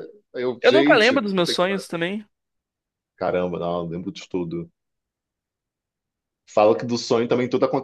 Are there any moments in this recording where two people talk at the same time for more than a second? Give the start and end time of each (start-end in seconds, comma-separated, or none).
0.6-1.8